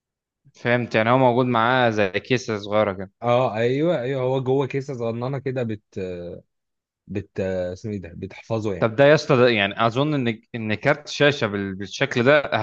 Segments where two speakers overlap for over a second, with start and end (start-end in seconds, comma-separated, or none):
none